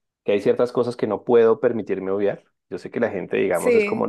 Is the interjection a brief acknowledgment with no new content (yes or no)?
yes